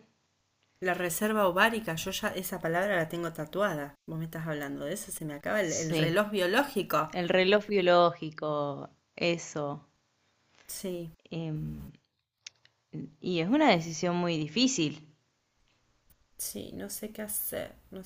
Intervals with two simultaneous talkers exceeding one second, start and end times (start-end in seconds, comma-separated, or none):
none